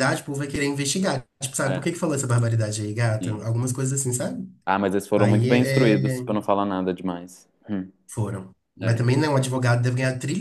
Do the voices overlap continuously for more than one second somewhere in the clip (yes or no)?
yes